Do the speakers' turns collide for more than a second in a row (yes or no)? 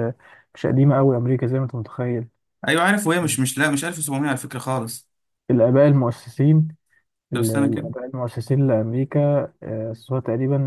no